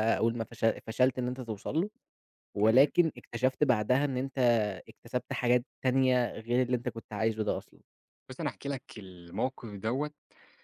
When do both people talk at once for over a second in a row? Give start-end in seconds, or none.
none